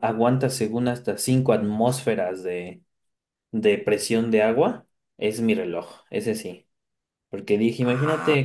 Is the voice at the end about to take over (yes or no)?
no